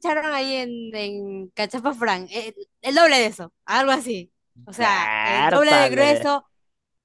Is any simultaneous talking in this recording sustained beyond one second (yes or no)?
yes